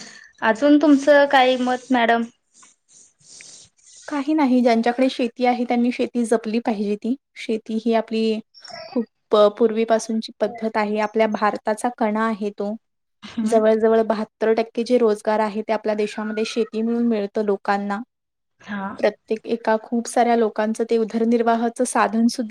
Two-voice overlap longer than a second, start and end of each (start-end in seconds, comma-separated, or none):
none